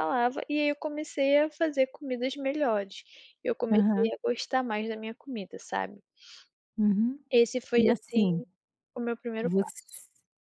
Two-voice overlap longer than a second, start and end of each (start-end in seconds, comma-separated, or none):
none